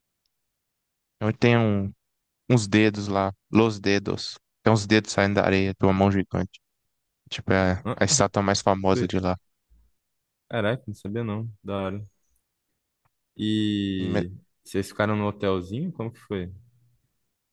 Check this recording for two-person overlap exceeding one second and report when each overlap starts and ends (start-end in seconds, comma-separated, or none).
none